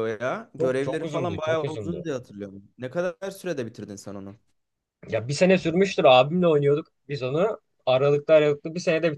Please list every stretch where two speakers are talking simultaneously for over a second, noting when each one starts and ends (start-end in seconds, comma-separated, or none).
0.6-2.0